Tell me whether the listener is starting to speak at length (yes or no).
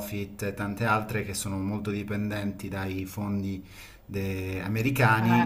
no